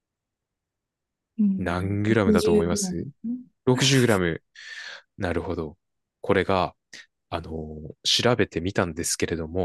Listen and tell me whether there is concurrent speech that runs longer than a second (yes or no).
yes